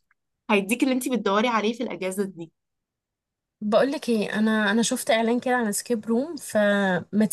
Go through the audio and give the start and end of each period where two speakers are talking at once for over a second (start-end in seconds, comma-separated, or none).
none